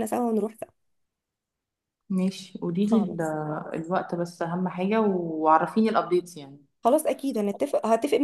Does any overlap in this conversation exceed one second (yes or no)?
no